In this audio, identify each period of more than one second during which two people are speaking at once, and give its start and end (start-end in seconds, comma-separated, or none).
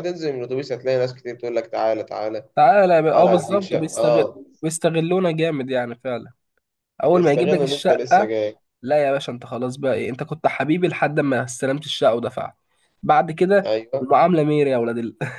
3.1-4.4, 7.1-8.3